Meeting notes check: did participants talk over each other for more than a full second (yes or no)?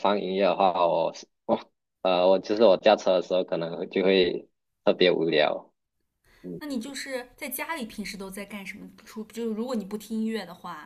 no